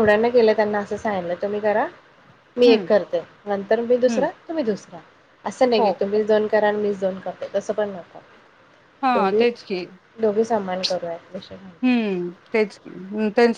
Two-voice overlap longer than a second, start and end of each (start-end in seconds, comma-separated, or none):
none